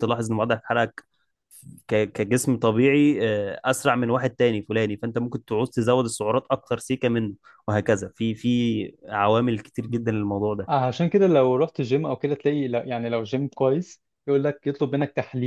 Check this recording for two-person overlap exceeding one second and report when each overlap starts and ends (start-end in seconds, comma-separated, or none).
none